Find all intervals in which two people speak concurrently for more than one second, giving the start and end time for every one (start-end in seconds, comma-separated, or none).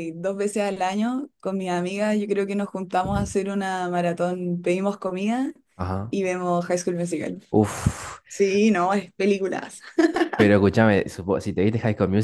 none